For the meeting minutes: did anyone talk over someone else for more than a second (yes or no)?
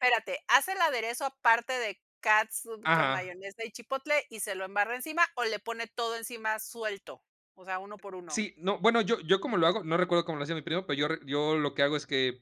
no